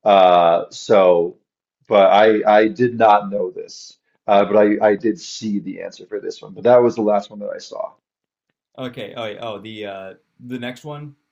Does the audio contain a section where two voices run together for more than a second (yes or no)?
no